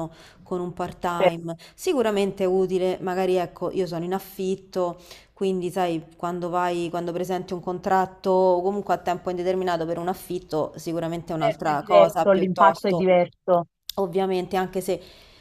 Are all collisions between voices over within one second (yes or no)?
no